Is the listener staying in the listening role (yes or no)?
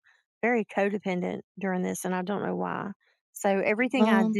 yes